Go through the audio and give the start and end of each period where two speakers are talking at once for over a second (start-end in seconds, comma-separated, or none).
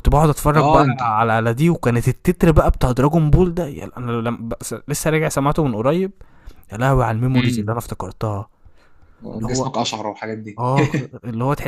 none